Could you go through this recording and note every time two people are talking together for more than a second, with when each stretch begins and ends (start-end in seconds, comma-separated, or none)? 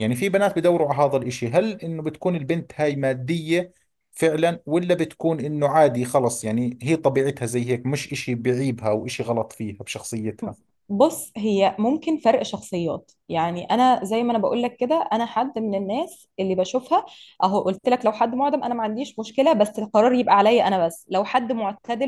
none